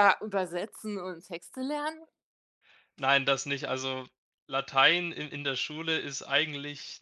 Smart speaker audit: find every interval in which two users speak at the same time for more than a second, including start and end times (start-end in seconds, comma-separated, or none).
none